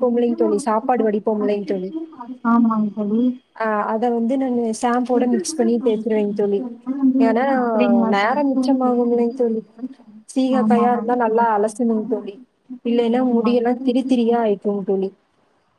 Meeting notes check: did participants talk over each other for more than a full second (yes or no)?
yes